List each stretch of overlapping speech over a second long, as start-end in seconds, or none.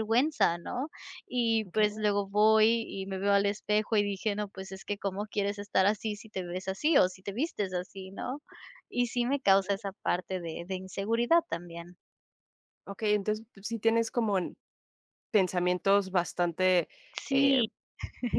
none